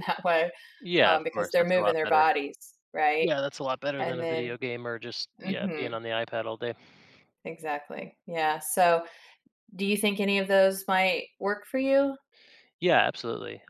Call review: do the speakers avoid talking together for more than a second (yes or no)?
no